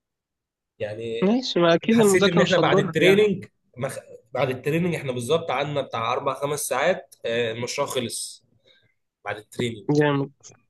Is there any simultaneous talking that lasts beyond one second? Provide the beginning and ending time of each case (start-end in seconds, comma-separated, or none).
1.9-3.2